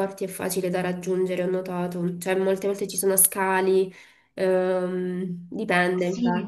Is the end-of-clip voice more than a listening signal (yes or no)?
yes